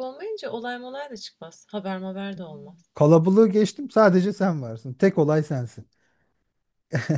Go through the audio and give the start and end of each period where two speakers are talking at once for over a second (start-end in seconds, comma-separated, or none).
none